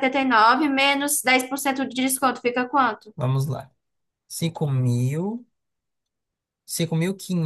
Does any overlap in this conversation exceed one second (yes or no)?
no